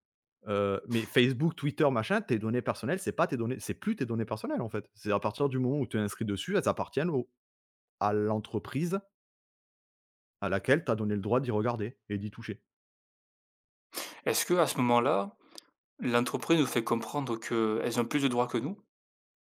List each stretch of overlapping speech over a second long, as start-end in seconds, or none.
none